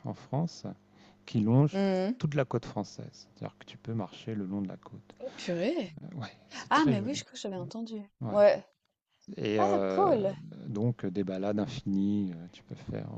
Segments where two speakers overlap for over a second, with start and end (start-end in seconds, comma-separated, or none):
none